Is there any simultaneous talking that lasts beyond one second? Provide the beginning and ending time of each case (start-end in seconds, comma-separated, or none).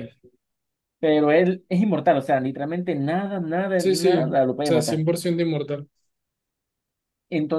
3.8-5.1